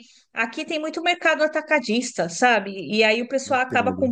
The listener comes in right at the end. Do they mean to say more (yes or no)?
no